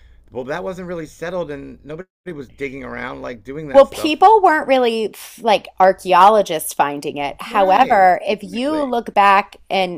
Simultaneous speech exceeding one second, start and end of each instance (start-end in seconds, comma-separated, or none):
7.5-8.9